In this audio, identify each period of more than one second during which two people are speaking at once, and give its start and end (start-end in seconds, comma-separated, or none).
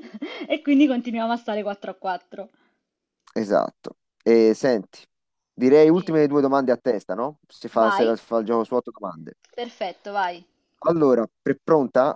none